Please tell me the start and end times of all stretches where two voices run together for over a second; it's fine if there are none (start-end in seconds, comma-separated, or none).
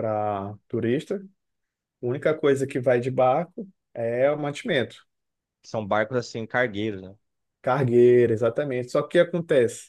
none